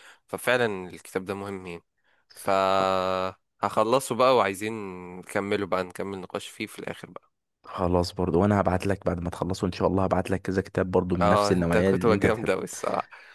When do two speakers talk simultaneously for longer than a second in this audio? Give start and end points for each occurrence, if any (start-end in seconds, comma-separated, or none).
11.2-12.5